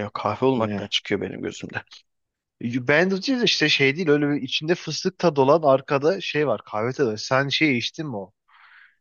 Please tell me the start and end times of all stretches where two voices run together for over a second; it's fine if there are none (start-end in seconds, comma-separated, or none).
none